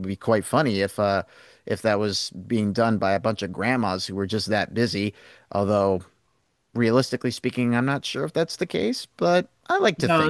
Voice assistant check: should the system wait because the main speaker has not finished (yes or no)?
no